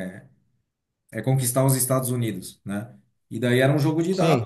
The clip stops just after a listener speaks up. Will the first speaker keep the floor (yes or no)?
yes